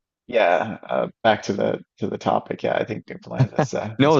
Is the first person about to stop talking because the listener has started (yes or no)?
yes